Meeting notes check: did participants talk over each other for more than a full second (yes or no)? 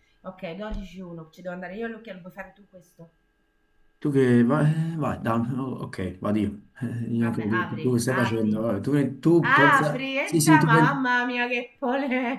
yes